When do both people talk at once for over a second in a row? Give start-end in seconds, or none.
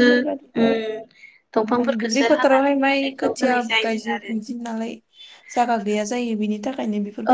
1.8-4.3